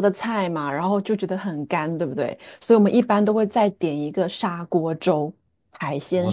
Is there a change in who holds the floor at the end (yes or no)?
yes